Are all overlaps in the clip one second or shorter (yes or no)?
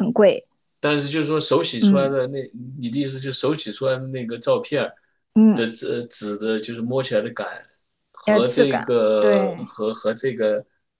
no